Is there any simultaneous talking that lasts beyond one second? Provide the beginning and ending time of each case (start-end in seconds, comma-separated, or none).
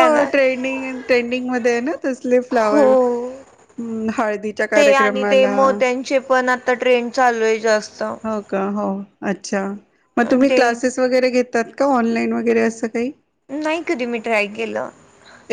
none